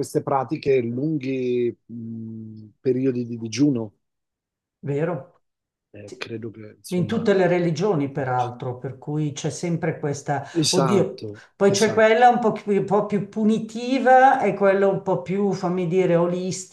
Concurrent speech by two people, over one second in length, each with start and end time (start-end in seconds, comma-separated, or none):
10.5-12.2